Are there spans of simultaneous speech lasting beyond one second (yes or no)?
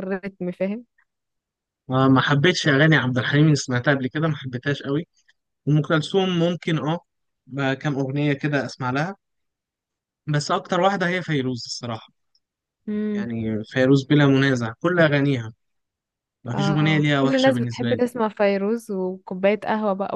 yes